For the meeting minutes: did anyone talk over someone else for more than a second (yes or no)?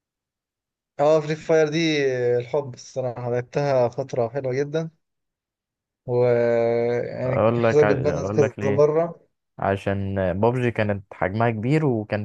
yes